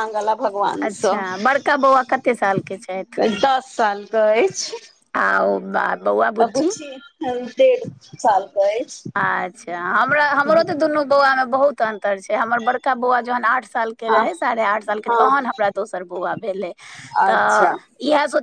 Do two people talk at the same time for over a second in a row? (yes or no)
no